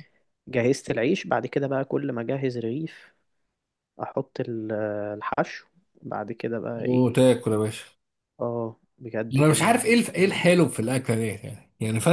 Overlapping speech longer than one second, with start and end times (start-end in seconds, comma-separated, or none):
9.3-10.7